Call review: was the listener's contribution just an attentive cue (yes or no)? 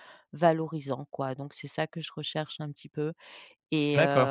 yes